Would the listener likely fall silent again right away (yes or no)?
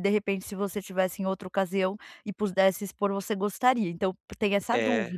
no